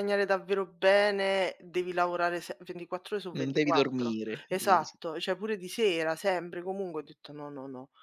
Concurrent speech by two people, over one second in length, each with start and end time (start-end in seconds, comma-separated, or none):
3.3-5.0